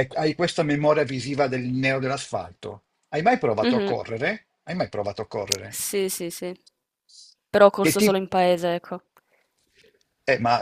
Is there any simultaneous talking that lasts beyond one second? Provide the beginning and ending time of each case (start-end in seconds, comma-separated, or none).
none